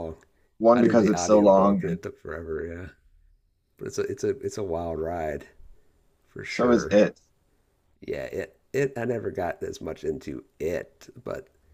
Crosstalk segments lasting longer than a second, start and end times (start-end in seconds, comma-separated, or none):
0.7-2.0